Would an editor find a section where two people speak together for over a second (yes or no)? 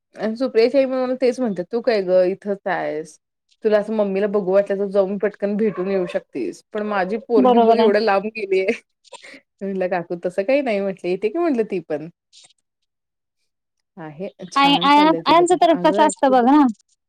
yes